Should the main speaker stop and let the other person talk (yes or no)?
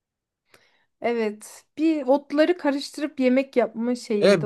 yes